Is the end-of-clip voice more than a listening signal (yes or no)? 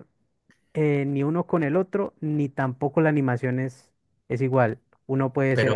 no